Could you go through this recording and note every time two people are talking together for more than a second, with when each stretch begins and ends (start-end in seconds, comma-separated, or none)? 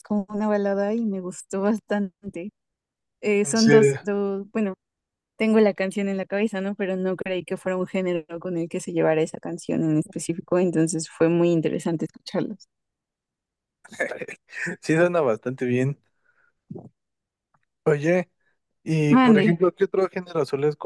none